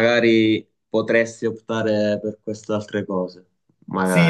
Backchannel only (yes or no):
no